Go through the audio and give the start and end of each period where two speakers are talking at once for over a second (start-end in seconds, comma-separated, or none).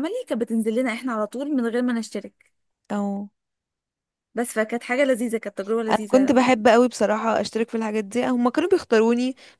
none